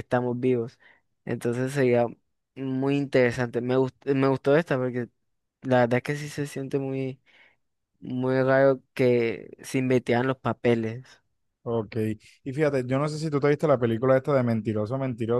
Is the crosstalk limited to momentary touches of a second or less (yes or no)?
yes